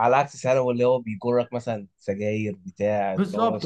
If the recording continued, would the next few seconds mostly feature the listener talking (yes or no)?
yes